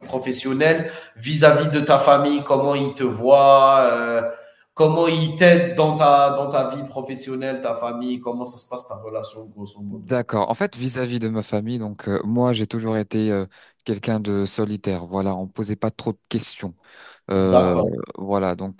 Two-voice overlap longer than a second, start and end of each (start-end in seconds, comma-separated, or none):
none